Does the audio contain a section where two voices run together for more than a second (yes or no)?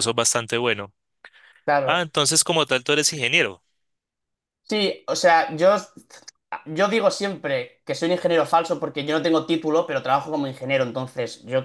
no